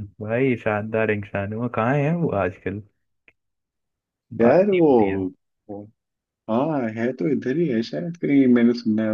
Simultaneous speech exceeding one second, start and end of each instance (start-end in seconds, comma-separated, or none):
none